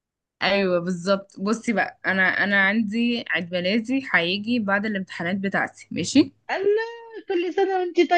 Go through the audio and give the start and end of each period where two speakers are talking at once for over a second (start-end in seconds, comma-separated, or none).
none